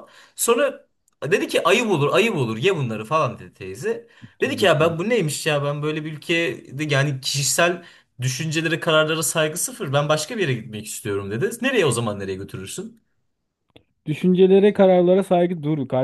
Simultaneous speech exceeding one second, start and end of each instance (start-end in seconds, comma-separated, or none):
none